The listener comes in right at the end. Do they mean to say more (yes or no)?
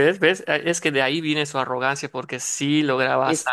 yes